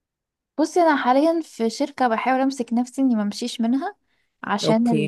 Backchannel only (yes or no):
yes